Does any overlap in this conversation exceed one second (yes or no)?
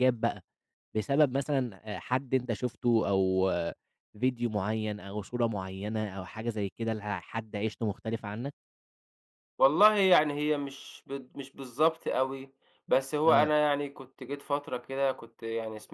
no